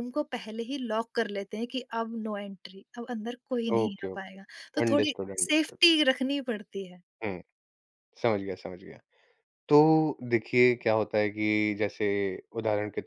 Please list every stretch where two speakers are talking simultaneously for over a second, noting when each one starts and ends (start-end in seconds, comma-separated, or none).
3.8-5.8